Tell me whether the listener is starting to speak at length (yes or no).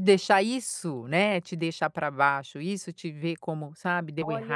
yes